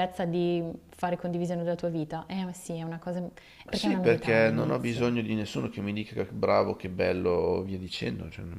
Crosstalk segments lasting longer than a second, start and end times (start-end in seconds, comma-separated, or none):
3.7-5.1